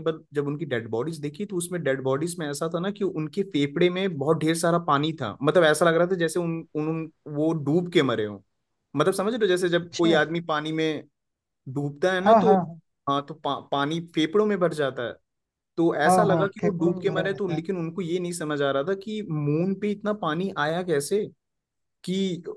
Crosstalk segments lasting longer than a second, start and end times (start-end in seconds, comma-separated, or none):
16.1-17.6